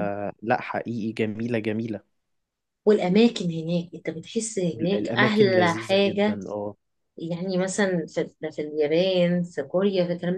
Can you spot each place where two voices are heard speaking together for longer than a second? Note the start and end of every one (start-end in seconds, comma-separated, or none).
4.7-6.4